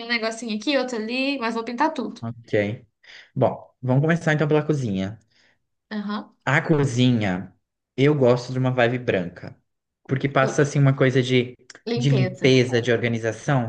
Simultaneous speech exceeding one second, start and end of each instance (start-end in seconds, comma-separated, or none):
none